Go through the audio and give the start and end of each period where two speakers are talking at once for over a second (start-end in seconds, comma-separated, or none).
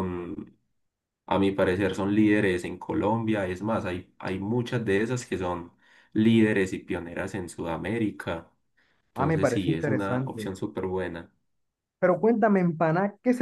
9.1-10.5